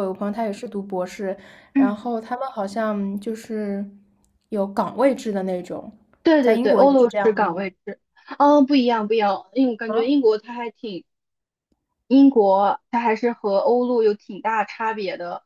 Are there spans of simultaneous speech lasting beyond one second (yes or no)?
yes